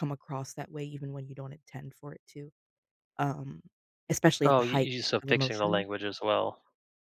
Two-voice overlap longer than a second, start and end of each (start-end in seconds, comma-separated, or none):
4.4-5.9